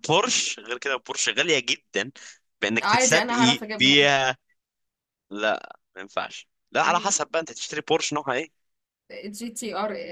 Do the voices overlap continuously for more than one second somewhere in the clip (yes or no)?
yes